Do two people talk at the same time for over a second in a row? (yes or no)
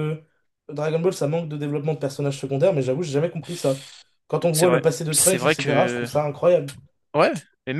yes